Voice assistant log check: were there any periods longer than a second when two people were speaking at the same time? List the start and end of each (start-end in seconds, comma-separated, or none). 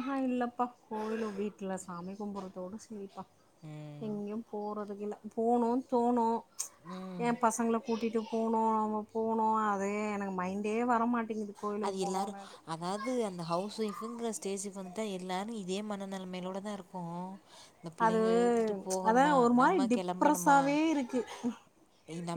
19.1-20.6